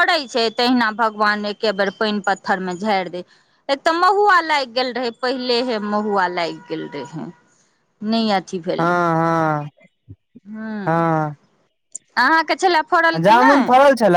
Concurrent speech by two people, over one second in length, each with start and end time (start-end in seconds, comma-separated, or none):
none